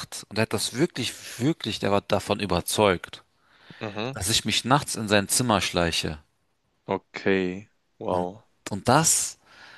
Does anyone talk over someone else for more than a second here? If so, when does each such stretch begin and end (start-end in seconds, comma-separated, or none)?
none